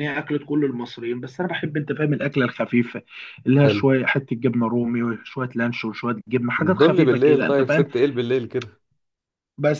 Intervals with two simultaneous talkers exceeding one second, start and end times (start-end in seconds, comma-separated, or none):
6.6-7.8